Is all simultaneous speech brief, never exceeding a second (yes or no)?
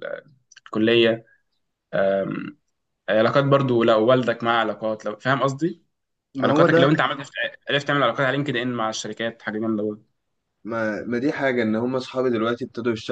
yes